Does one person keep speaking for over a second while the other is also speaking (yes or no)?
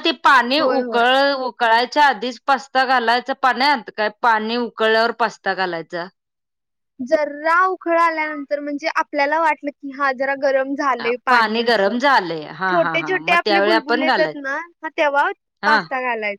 yes